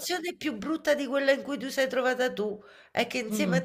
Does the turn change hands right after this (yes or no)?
no